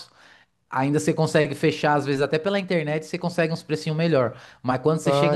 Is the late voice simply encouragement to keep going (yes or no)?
yes